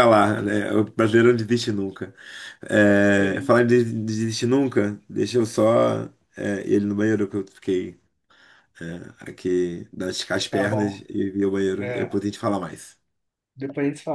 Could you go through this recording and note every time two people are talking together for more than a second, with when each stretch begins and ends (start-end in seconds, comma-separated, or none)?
none